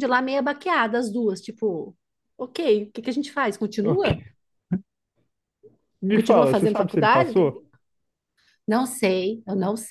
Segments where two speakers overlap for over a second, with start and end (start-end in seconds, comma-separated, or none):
6.1-7.7